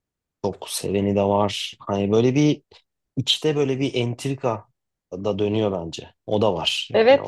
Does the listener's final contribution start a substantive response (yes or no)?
yes